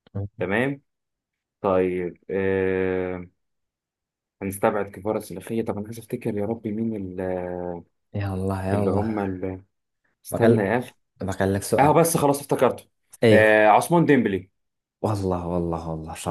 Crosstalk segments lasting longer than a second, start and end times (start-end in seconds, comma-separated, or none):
none